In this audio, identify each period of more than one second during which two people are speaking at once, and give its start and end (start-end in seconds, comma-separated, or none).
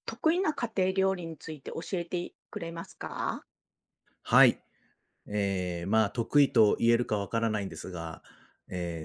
none